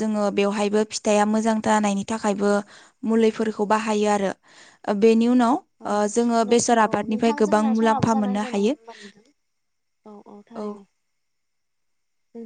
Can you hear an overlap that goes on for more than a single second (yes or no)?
yes